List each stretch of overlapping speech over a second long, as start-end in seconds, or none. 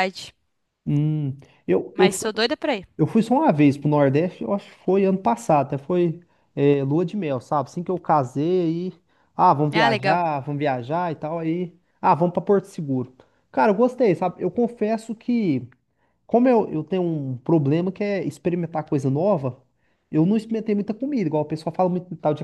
none